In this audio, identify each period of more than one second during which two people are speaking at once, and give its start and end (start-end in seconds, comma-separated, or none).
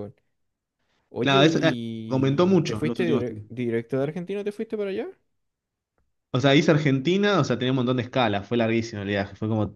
1.2-3.5